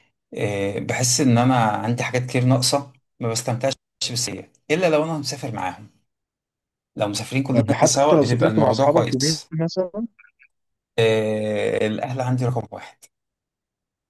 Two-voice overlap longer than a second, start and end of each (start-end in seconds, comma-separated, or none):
7.5-9.5